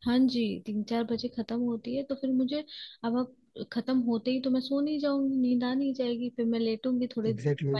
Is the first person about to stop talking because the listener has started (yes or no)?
no